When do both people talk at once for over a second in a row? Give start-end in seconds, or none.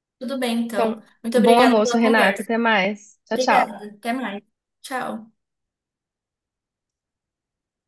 0.7-2.5